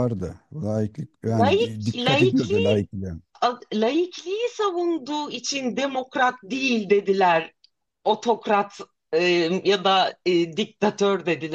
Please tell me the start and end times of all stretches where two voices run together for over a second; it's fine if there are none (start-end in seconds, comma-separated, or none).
1.4-2.9